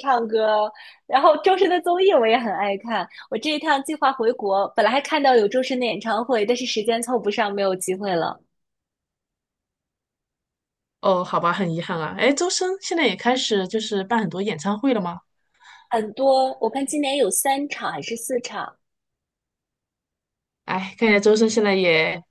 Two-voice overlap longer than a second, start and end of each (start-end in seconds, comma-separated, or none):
none